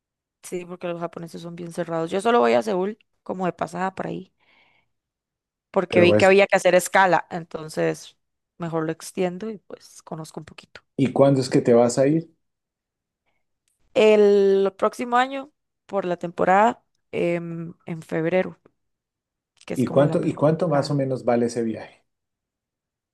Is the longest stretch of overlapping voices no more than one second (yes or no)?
no